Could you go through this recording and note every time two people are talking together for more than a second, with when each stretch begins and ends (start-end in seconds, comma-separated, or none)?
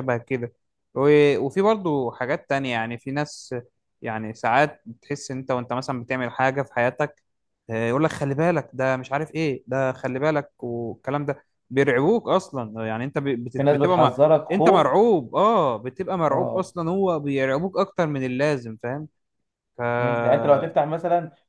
13.6-14.9